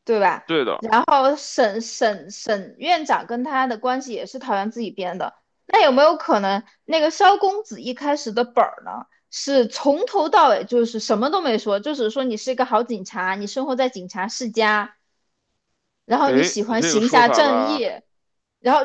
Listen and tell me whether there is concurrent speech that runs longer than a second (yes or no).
yes